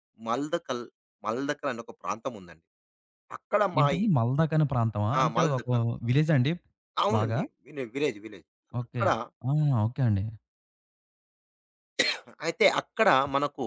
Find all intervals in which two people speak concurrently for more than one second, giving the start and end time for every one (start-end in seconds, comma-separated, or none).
none